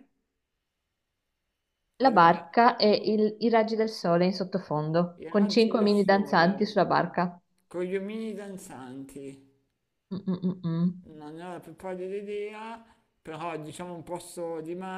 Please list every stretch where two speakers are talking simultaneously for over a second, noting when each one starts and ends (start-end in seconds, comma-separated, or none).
5.2-6.8